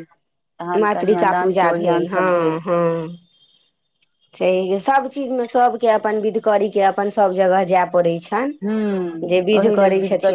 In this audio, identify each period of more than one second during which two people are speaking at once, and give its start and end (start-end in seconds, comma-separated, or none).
0.8-2.3